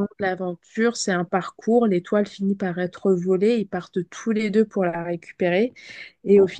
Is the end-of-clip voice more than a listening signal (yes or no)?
no